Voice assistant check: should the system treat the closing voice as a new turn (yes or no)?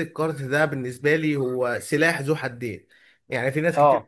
no